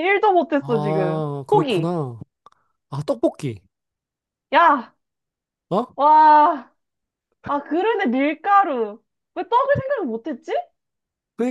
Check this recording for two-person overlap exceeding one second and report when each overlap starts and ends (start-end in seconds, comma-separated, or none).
0.6-1.9